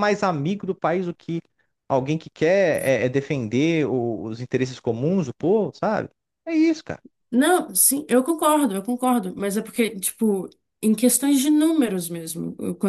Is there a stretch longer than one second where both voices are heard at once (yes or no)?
no